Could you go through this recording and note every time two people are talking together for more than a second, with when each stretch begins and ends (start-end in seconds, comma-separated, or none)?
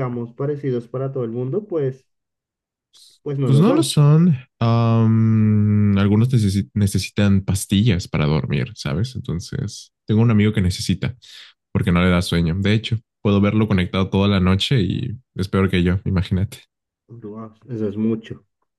none